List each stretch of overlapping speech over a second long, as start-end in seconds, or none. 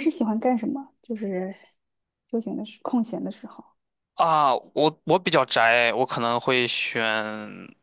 none